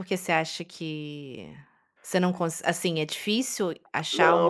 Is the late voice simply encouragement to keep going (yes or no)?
no